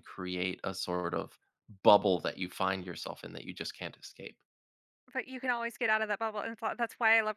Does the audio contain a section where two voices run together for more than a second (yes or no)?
no